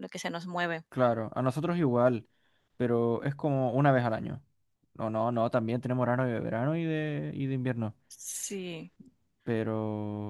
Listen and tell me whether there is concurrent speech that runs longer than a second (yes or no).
no